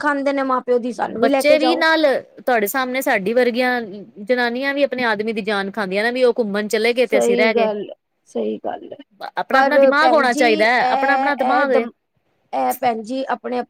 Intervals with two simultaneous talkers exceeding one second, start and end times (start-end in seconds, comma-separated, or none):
9.5-11.8